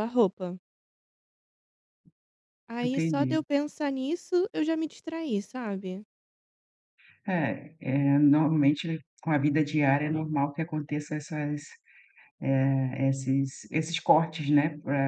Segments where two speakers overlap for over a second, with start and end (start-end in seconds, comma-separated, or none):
none